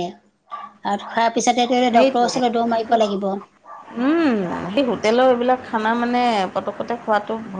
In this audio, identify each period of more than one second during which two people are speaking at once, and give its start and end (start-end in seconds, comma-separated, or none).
none